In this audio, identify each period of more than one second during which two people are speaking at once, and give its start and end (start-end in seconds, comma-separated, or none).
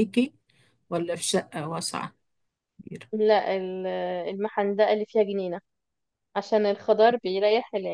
none